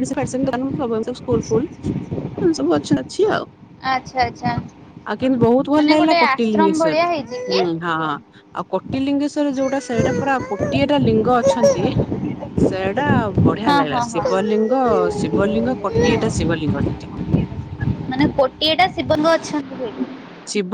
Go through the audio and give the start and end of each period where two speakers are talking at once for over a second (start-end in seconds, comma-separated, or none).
5.8-7.6